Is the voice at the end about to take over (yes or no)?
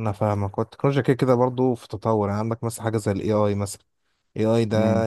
no